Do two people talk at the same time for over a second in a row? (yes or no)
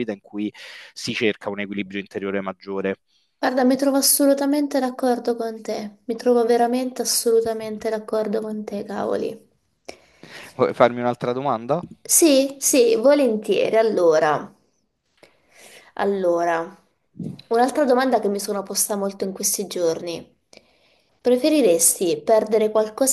no